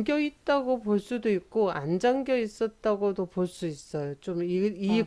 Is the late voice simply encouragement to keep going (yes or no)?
yes